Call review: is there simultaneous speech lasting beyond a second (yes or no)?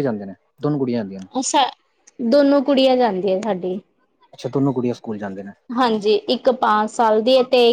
no